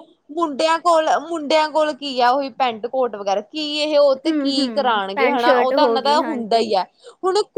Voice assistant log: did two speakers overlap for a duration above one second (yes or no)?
yes